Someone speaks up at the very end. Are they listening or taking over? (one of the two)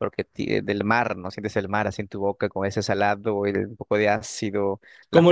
taking over